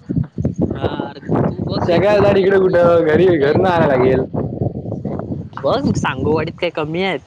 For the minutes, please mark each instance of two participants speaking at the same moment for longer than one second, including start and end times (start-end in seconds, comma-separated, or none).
1.9-3.2